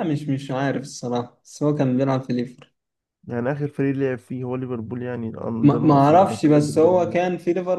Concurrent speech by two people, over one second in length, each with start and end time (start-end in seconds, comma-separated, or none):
5.6-7.2